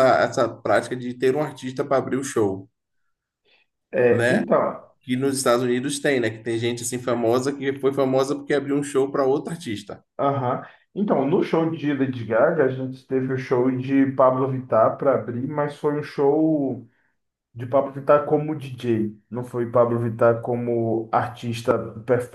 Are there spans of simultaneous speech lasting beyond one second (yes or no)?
no